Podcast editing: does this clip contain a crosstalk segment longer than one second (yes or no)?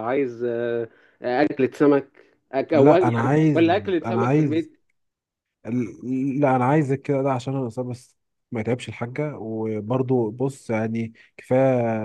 yes